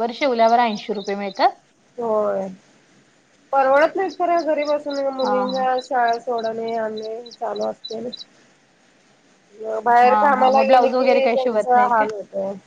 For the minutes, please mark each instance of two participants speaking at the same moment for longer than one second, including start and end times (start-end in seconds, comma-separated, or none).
10.1-12.1